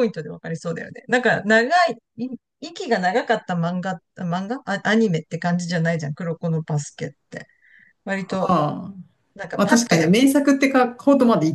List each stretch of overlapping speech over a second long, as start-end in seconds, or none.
none